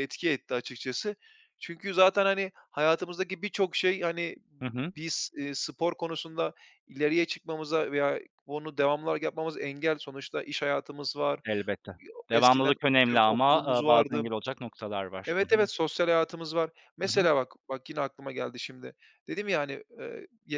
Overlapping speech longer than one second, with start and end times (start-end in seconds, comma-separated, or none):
12.3-14.2